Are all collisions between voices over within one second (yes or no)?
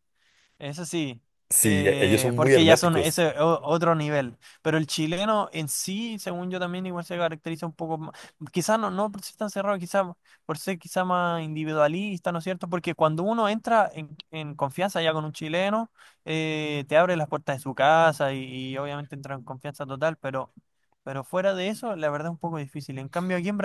no